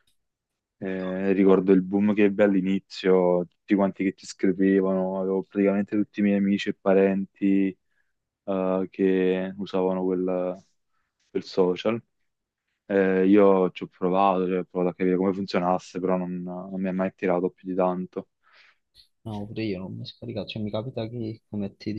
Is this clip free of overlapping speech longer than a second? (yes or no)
yes